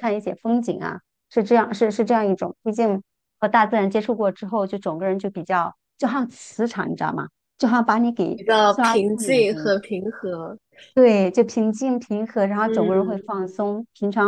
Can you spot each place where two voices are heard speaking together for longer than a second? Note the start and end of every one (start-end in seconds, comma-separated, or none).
8.3-9.7